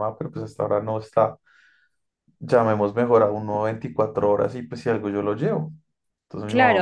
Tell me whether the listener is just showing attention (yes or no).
no